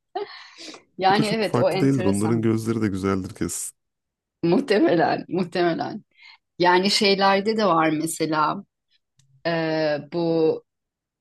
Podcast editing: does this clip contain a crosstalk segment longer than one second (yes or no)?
yes